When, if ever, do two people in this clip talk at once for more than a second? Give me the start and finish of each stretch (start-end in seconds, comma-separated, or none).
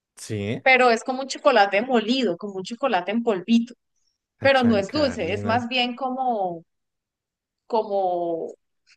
4.4-5.7